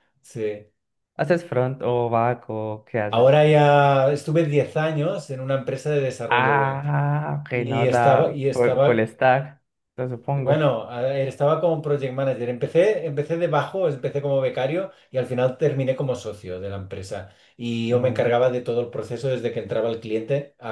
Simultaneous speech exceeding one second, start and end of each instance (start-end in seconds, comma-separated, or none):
7.5-9.1